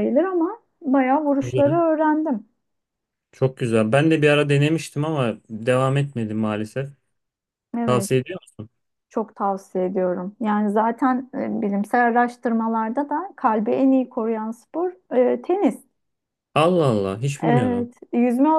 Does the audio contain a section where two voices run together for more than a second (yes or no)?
no